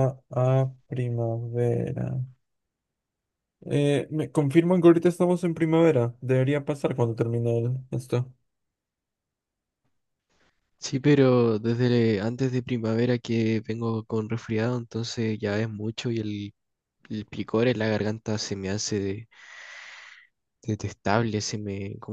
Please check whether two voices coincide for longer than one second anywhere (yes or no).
no